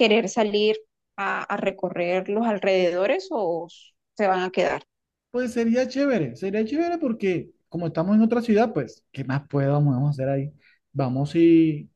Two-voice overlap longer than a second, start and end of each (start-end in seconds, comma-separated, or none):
none